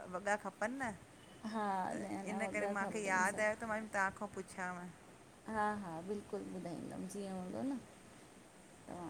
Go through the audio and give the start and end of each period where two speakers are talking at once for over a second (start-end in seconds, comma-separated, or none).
1.9-3.8